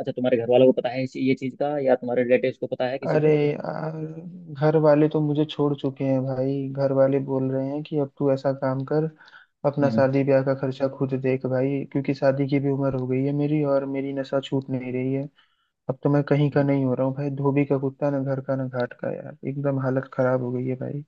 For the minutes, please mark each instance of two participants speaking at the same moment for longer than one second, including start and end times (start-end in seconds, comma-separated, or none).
none